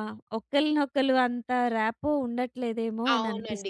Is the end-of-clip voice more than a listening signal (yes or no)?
yes